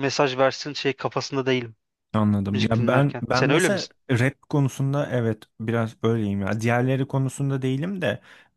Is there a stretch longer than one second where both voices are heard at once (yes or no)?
yes